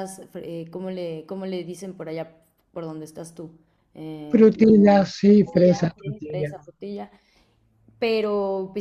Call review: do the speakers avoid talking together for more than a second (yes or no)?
no